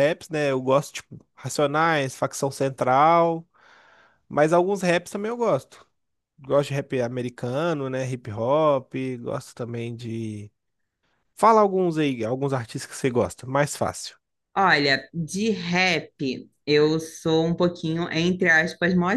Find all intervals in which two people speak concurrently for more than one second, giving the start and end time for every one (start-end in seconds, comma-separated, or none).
none